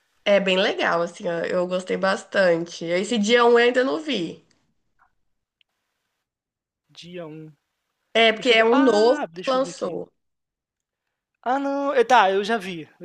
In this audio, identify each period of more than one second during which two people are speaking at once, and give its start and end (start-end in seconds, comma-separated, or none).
8.3-10.0